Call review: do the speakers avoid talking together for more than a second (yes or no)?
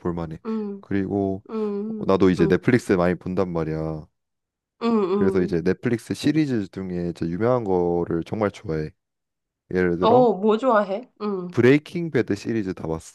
yes